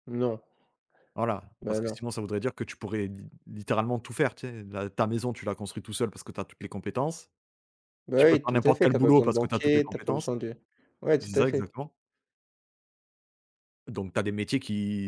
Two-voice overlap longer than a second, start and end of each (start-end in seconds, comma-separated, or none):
8.2-10.3